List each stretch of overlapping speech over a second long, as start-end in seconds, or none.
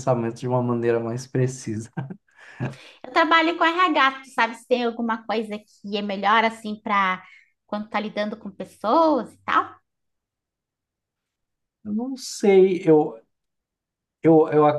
none